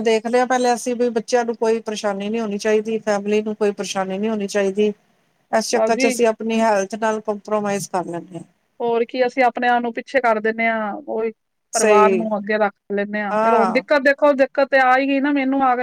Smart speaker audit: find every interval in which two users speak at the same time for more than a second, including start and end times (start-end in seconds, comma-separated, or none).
none